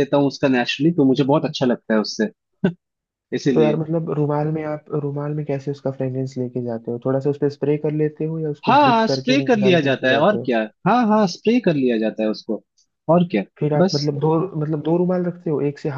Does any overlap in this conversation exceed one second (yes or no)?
yes